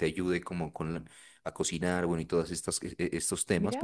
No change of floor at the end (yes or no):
no